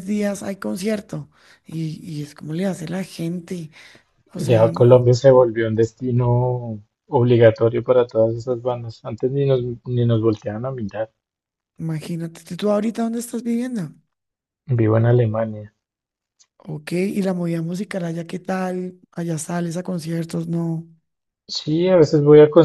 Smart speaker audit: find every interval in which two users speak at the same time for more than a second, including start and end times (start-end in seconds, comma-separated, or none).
none